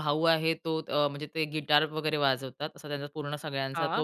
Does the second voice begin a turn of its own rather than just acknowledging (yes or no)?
no